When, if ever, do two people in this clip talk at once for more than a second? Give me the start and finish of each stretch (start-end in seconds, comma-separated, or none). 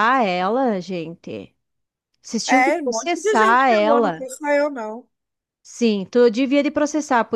2.5-4.3